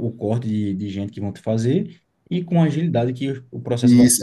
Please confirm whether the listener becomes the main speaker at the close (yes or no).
yes